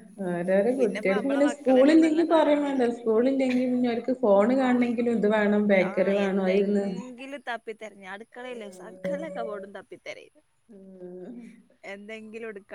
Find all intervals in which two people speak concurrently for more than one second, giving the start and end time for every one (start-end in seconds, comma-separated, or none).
0.8-2.9